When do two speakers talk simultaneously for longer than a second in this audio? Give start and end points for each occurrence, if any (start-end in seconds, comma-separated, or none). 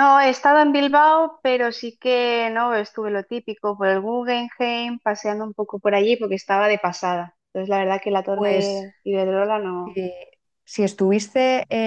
none